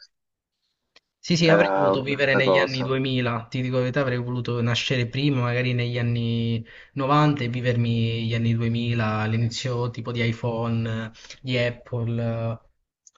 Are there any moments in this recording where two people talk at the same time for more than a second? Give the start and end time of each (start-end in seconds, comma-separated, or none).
1.4-3.0